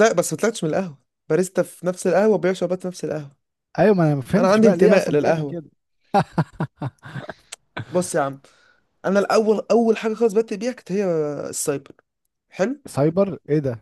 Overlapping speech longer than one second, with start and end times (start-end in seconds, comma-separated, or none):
4.4-5.6